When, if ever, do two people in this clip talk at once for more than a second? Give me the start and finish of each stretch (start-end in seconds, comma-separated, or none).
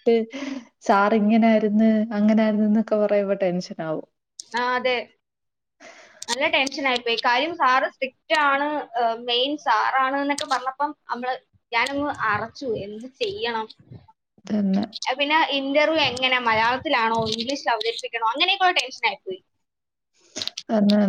none